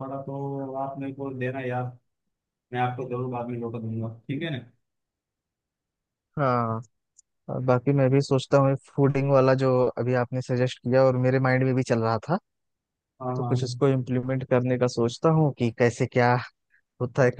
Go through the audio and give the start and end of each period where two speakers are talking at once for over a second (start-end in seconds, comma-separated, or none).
none